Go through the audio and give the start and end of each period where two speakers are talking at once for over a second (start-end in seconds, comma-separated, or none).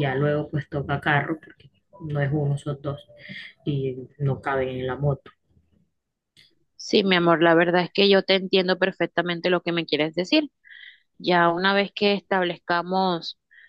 none